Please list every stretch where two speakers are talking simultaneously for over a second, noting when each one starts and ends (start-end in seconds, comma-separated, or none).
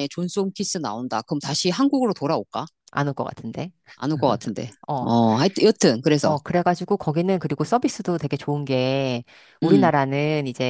none